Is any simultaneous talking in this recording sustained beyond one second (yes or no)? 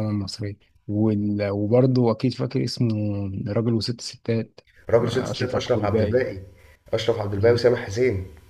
yes